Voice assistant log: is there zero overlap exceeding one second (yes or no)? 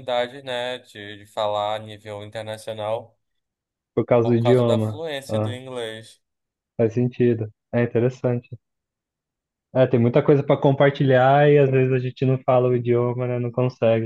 no